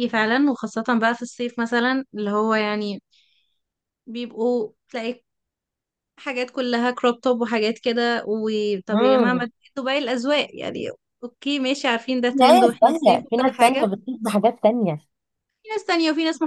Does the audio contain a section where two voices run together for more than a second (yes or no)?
yes